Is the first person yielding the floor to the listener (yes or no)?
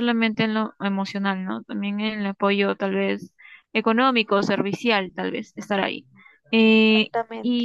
no